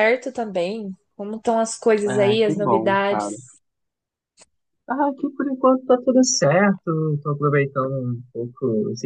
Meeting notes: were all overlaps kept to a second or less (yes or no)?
no